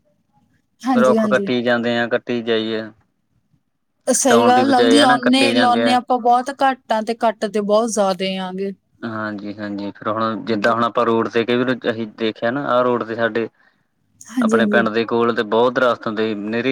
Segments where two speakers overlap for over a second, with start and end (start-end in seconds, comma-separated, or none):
4.2-6.0